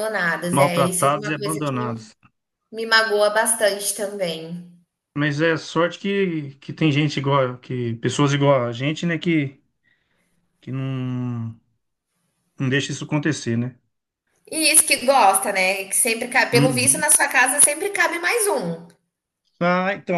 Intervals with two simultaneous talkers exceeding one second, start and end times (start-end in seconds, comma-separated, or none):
0.5-1.9